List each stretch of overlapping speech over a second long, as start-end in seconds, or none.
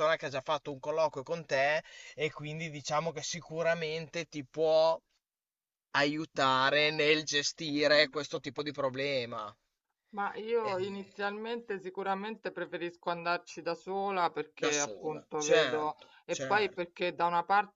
14.6-16.9